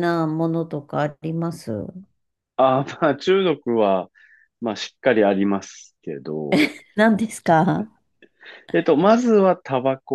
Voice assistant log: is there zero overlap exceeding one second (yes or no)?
yes